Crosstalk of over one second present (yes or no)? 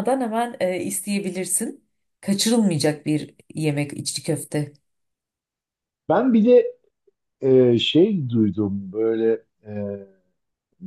no